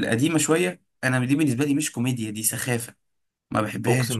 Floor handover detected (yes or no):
yes